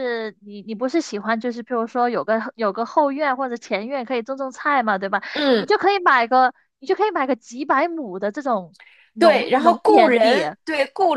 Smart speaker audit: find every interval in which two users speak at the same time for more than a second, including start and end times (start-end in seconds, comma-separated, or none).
9.2-10.4